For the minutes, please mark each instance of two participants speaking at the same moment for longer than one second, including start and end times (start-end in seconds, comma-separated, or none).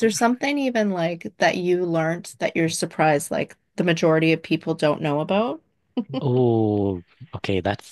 none